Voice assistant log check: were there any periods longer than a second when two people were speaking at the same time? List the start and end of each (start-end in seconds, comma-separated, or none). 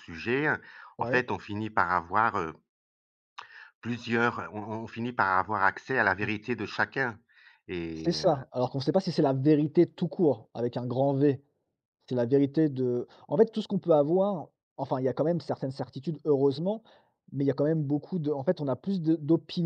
none